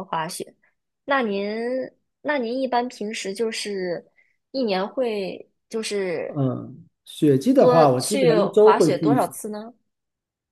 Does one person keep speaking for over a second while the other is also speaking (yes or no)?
yes